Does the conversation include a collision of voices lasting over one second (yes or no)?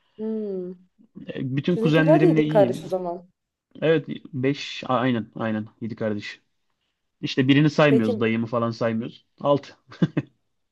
yes